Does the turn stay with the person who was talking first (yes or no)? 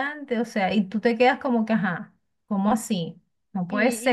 no